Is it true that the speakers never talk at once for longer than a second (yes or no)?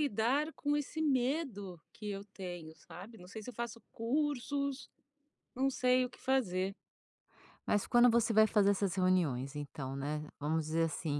yes